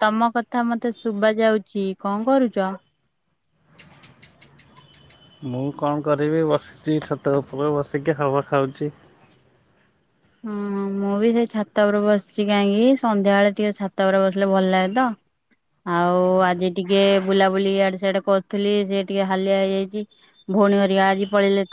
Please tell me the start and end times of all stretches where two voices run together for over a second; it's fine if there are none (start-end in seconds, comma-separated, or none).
none